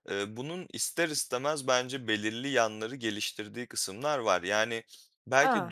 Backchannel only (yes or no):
yes